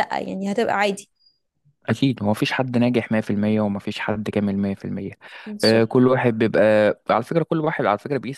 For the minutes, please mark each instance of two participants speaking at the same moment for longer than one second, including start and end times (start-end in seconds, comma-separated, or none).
none